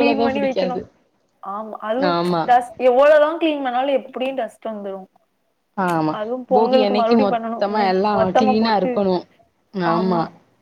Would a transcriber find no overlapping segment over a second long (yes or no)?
no